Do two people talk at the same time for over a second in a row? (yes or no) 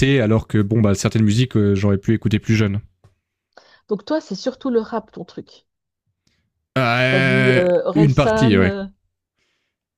yes